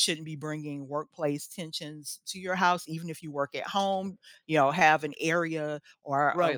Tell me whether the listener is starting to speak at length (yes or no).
yes